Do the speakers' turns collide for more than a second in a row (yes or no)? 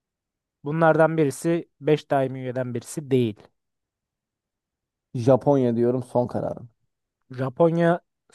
no